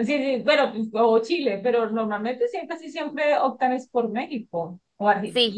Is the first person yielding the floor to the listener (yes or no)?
no